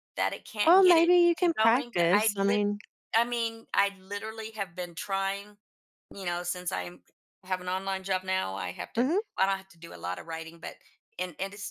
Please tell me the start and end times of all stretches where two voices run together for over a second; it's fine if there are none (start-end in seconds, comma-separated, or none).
0.7-2.6